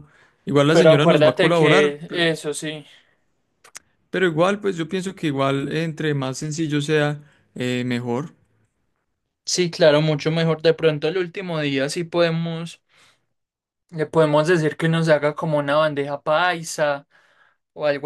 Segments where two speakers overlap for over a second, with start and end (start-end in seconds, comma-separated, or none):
0.7-2.3